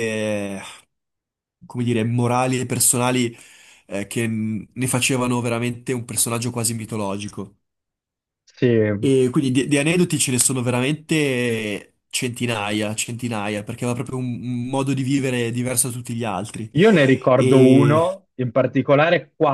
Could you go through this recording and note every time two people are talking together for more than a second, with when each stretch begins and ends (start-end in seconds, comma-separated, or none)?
none